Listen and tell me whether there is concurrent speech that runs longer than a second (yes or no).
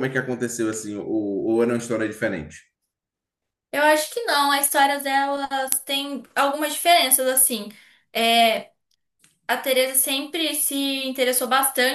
no